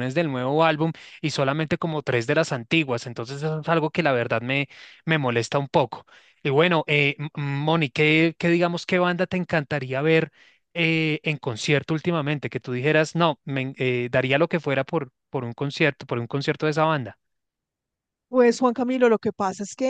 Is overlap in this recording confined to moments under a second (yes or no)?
yes